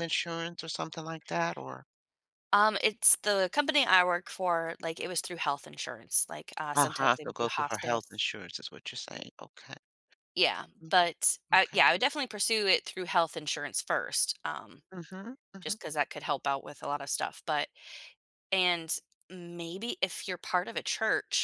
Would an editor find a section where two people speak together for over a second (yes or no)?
yes